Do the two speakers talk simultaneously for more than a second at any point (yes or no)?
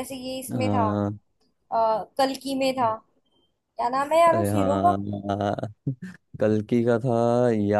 no